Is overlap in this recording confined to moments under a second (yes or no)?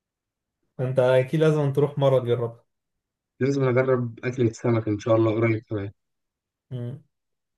yes